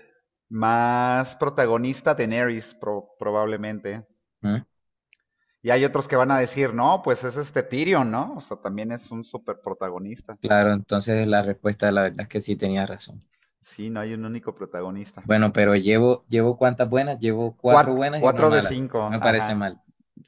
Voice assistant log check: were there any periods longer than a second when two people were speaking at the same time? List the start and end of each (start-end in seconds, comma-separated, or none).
17.7-19.8